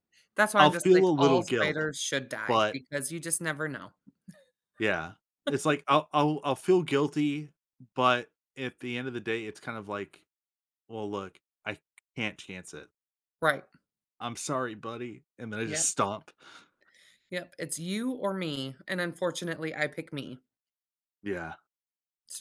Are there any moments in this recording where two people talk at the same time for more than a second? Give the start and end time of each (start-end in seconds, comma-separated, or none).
0.6-1.8